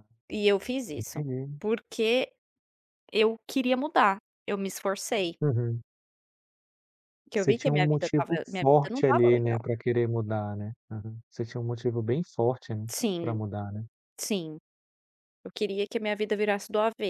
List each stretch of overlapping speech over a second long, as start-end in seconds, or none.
7.3-9.6